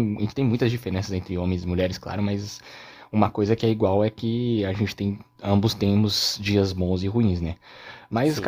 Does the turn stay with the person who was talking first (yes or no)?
yes